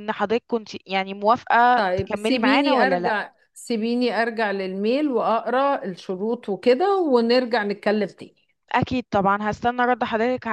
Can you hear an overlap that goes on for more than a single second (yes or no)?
yes